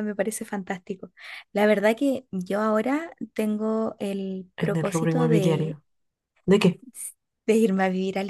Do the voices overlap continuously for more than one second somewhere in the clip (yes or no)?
yes